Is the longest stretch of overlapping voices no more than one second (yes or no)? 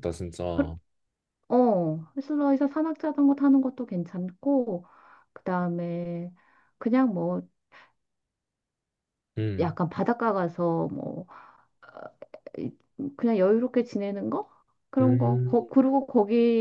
yes